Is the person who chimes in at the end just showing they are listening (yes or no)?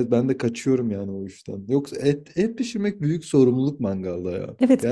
no